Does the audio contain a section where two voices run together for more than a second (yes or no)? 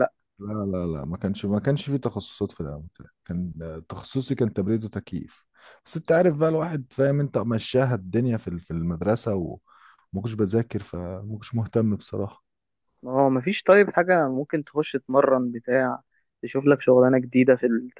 no